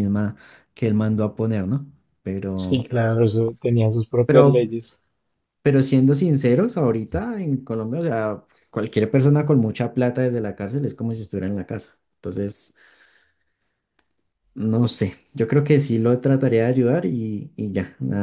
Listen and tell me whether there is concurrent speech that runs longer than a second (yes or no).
no